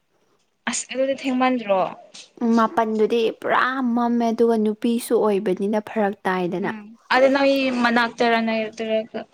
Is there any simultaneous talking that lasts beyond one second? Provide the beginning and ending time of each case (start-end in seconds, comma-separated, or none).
none